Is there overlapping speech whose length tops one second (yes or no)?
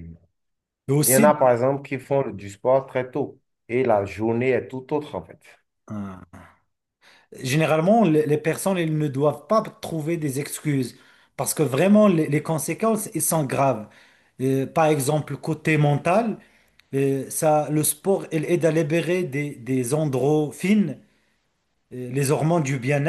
no